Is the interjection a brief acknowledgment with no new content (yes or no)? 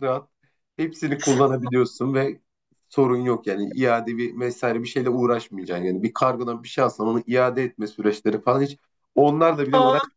yes